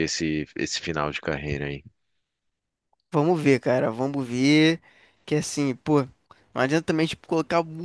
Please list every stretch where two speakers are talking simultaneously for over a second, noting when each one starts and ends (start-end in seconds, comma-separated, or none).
none